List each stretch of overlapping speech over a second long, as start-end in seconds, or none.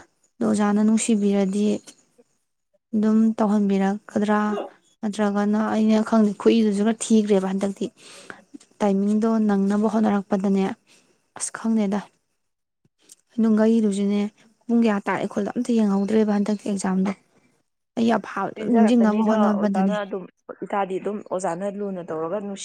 18.6-19.9